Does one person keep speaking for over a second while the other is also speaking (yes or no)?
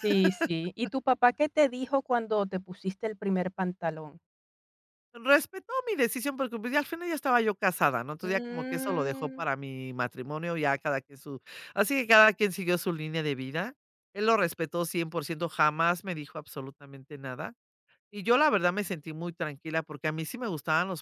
yes